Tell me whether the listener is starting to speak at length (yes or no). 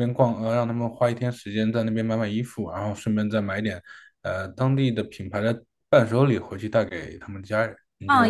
yes